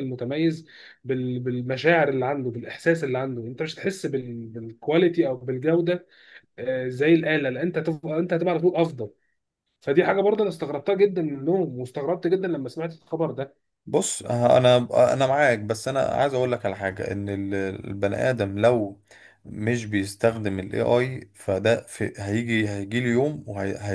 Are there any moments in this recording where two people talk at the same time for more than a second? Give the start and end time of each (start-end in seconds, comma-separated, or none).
none